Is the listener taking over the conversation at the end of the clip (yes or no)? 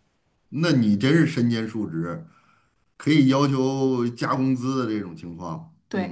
yes